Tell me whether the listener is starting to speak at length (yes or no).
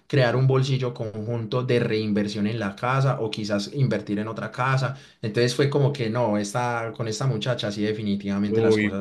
yes